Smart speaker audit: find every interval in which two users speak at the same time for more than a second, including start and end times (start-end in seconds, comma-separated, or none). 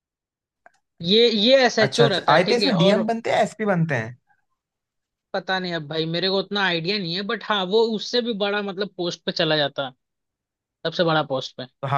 1.8-3.1